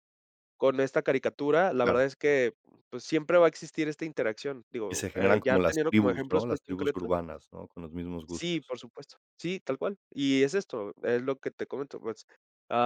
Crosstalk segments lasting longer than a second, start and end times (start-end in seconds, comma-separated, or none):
4.9-7.1